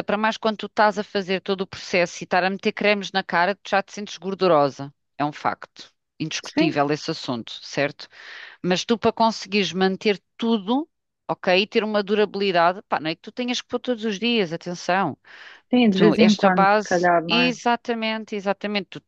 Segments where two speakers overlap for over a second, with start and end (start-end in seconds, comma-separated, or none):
15.9-17.5